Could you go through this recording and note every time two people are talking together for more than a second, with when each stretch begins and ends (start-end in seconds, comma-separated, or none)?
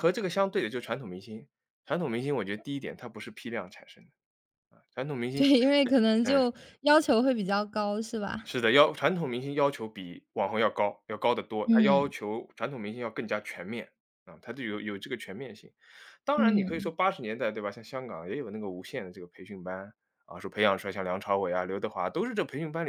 none